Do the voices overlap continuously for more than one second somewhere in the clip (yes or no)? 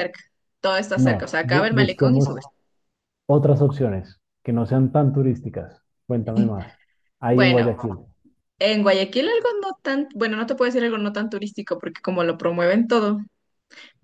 yes